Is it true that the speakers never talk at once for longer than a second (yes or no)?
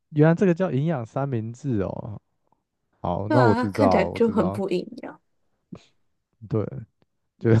no